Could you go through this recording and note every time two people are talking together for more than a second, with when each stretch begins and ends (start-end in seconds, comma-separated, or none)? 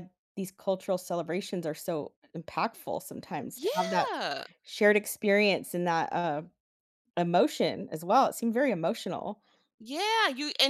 none